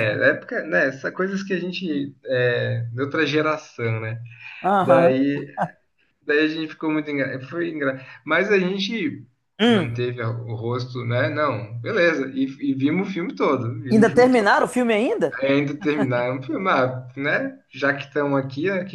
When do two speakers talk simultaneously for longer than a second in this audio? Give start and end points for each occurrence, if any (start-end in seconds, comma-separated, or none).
none